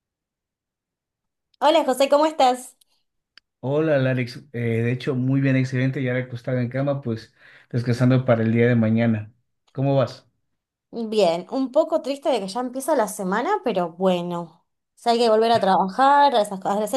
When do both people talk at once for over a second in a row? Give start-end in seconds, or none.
none